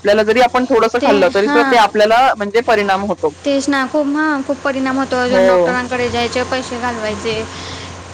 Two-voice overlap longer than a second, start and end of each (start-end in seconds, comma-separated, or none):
none